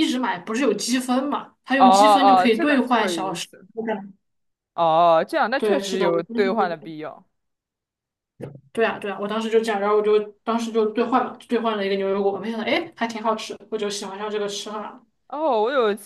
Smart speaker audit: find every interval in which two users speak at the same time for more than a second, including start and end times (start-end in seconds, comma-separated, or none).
1.8-3.5, 5.6-6.9